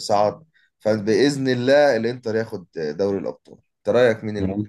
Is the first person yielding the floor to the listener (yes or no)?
yes